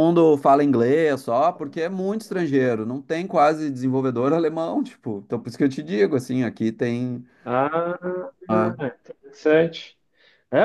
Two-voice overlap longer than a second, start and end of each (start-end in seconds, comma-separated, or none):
none